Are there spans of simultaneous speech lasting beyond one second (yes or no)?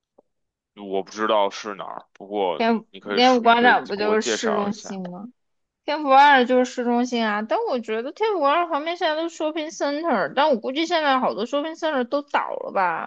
yes